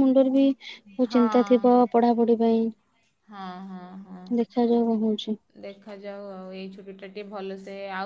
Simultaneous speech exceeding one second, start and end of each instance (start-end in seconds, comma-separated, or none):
0.9-2.5